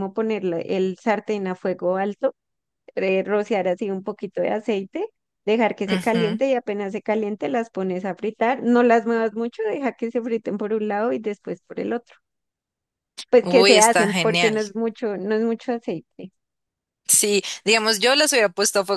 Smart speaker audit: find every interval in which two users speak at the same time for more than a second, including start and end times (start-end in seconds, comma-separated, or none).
13.4-14.6